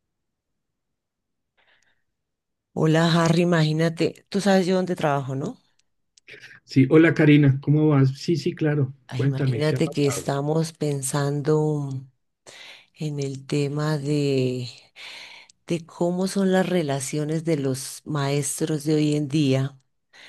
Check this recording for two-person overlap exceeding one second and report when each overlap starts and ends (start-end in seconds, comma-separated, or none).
9.1-10.3